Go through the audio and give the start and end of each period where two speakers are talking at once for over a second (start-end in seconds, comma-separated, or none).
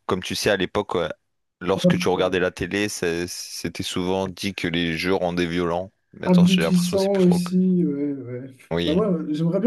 6.2-7.5